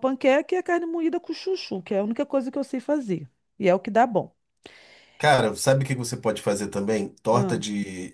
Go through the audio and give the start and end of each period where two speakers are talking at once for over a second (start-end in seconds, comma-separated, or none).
none